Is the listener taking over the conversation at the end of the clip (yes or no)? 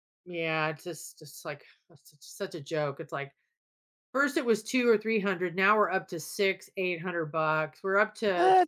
no